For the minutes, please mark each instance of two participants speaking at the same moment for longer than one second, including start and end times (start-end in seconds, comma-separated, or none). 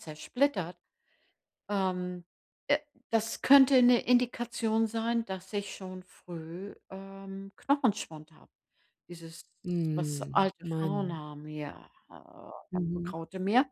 9.9-11.2